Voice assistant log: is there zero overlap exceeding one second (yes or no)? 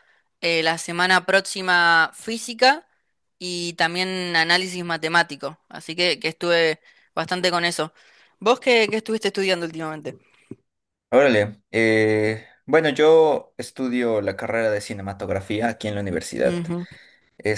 yes